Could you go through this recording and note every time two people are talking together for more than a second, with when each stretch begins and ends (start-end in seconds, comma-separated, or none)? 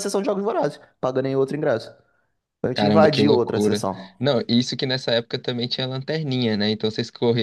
2.7-4.2